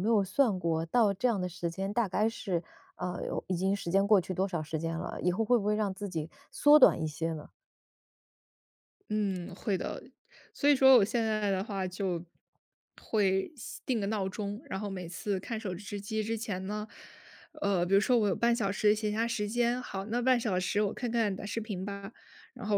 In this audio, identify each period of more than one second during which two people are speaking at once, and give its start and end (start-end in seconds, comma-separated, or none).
none